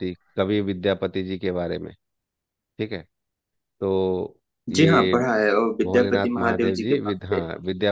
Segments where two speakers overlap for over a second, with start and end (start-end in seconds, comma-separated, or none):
5.8-7.4